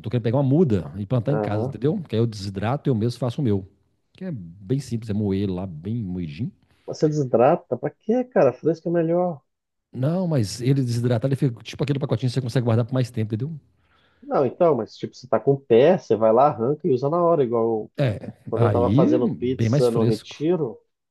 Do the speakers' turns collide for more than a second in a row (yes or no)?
yes